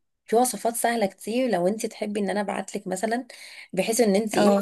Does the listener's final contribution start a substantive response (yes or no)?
no